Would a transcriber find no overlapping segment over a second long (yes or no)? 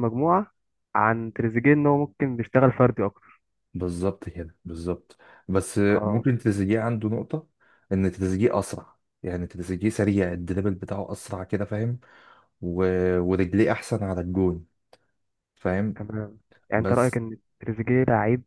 yes